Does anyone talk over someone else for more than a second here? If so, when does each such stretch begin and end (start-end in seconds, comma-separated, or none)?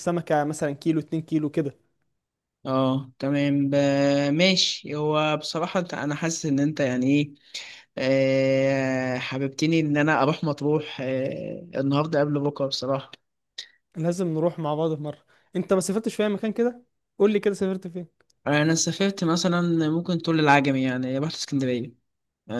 none